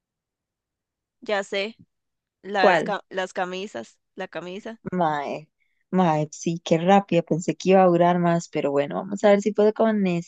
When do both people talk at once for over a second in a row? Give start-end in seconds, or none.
none